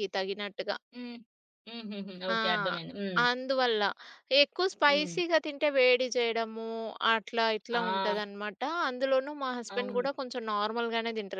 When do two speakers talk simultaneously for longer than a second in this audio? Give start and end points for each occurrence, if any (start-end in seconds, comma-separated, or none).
none